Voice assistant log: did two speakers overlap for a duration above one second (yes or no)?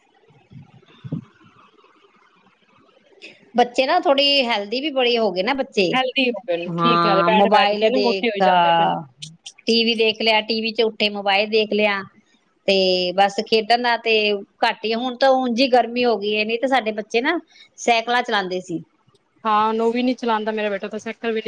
yes